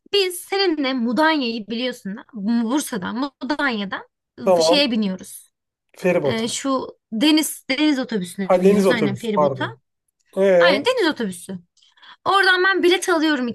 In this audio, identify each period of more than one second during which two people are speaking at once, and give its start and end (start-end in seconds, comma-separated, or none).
8.4-9.8